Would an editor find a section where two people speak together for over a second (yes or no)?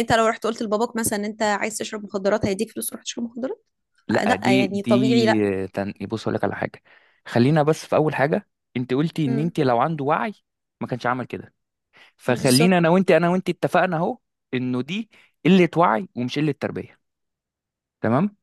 yes